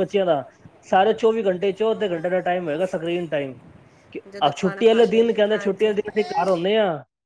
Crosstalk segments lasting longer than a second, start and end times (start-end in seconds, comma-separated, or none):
4.6-6.3